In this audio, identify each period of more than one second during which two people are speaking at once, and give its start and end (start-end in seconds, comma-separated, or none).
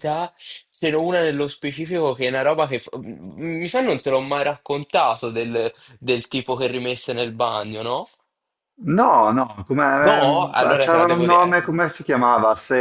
10.0-11.6